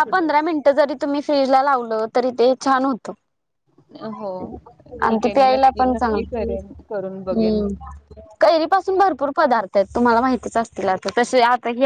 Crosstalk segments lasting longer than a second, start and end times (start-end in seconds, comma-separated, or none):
5.1-7.6